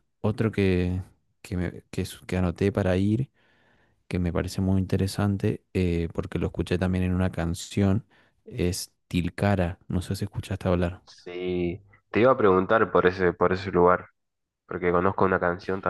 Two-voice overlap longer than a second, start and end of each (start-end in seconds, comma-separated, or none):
none